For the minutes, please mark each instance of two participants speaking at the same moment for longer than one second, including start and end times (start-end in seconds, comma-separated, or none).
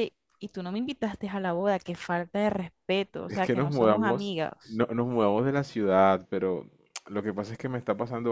3.3-4.8